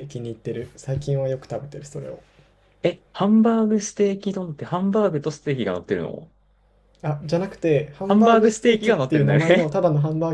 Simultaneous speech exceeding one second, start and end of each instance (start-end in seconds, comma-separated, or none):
8.1-9.7